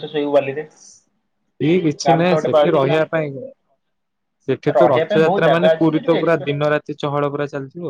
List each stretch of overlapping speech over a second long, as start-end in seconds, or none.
4.8-6.5